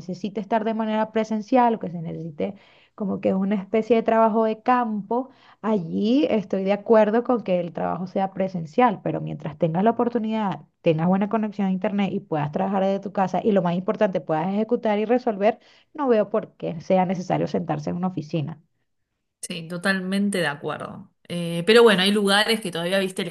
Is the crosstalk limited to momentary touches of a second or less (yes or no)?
yes